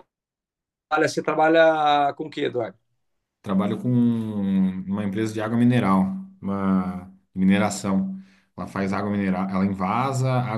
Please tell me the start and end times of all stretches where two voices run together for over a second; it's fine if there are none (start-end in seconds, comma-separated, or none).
none